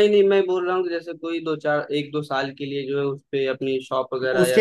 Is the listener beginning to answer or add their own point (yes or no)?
yes